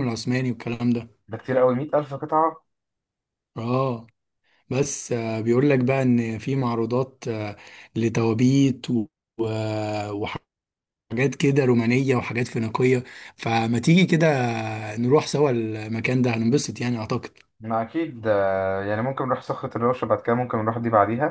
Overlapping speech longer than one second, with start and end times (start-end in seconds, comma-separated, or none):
none